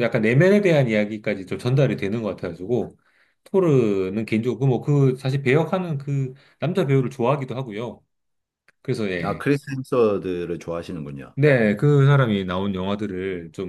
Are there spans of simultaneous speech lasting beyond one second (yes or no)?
no